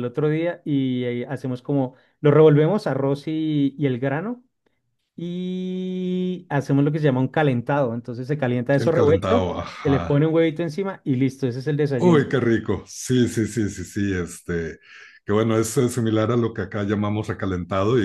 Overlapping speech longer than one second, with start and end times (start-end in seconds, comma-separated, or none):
8.8-10.2